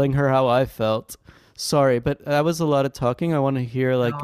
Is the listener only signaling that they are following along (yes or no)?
no